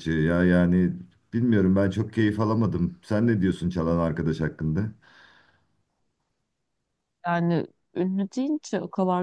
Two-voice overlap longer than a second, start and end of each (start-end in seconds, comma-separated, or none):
none